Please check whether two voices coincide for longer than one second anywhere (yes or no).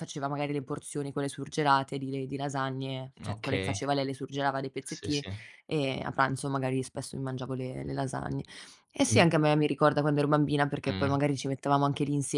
no